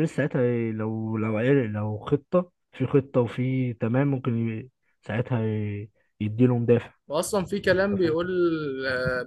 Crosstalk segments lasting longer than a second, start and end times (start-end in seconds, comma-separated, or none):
none